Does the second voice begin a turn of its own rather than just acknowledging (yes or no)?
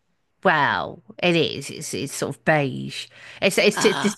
no